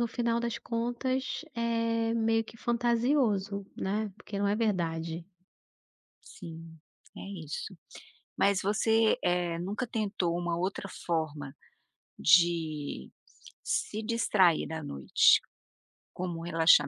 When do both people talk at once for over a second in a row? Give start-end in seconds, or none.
none